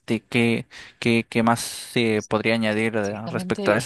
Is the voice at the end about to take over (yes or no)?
yes